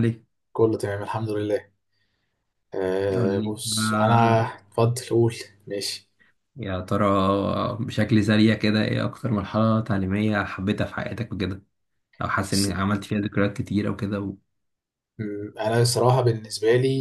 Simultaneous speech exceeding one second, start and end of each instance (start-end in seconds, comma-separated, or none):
3.1-4.5